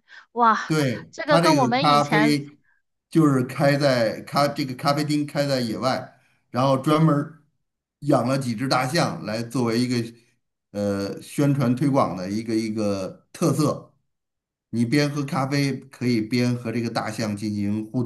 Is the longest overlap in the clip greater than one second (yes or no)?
yes